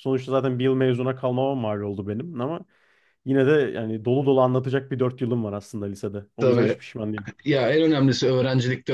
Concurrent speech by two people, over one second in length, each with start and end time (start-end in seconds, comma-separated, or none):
none